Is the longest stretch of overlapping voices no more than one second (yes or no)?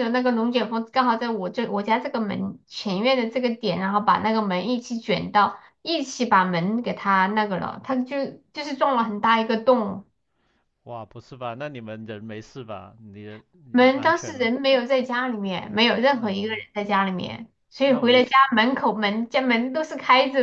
yes